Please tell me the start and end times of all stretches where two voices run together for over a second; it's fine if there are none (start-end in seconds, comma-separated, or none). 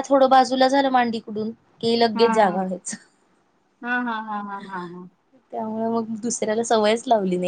none